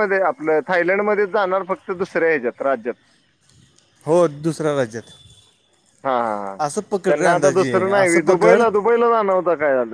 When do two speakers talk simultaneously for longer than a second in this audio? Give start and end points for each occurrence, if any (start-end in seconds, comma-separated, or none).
7.1-8.6